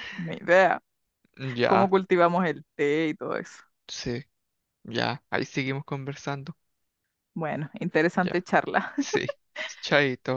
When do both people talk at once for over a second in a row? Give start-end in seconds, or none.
none